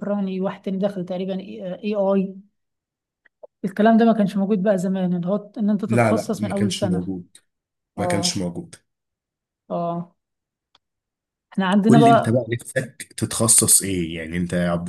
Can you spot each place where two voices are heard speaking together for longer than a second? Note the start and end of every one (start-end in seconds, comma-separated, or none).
5.9-7.1